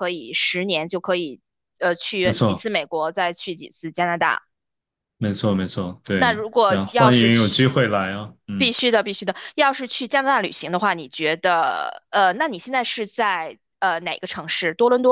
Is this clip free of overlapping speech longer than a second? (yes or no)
no